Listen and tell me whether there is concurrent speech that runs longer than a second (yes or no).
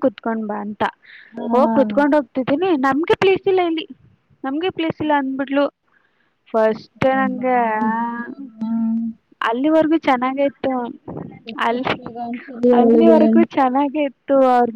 no